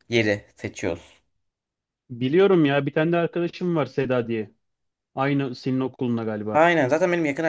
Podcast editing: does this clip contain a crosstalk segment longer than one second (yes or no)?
no